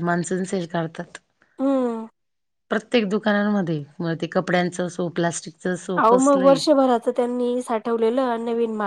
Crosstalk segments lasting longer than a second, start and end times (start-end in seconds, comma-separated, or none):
none